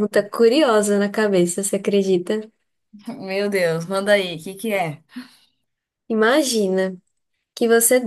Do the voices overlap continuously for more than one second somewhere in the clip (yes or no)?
no